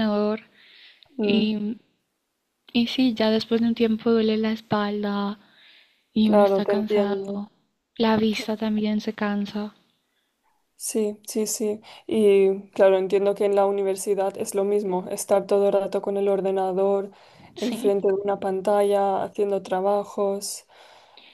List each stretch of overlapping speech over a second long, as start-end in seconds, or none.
6.2-7.5